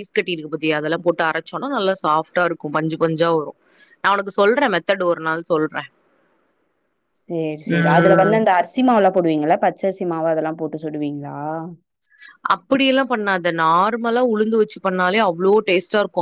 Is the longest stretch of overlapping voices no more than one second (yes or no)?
yes